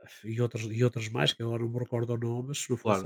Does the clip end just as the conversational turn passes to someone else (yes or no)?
no